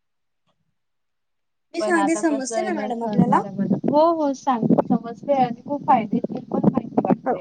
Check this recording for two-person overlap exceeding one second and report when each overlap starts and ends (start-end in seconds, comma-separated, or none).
1.8-3.4